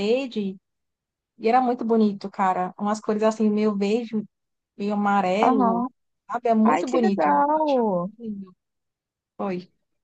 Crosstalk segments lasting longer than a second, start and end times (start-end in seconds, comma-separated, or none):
6.6-8.1